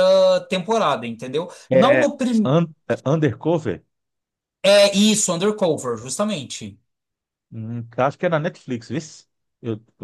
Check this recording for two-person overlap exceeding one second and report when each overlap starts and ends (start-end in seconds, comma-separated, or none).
none